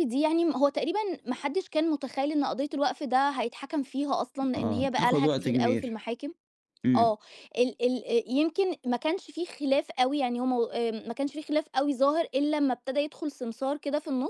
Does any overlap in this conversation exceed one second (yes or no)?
yes